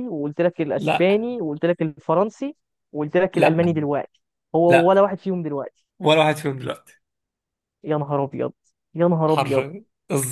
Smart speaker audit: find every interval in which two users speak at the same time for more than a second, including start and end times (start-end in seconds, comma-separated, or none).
none